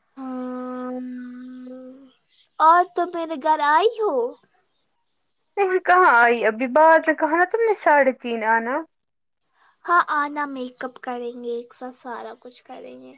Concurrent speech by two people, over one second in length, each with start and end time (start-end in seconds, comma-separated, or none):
none